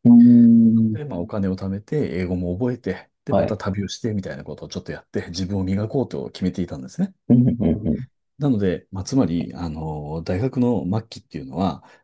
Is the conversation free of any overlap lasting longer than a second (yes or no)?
yes